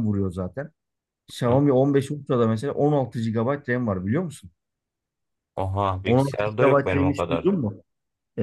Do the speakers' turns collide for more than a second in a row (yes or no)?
yes